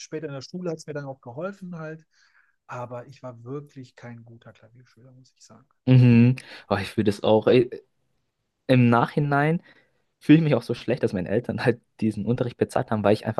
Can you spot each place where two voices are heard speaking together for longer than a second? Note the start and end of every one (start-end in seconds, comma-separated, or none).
none